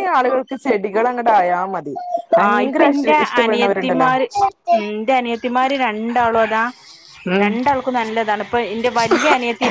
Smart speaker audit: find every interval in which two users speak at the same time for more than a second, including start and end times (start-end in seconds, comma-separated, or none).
2.4-4.1